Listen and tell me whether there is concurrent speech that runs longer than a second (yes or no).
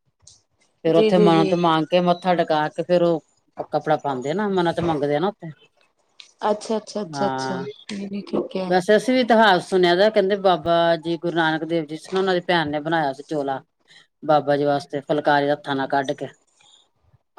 no